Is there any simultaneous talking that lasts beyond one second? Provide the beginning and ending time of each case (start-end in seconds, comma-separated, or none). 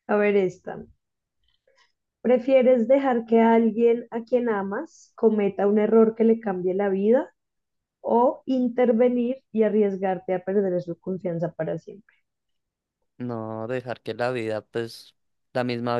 none